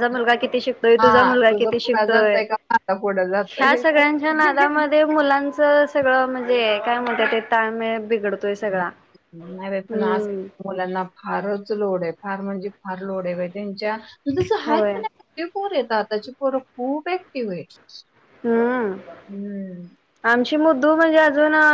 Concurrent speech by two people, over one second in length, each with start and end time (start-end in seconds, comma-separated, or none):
1.0-2.4